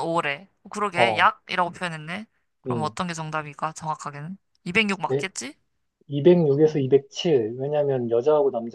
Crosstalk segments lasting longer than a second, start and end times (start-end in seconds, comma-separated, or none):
none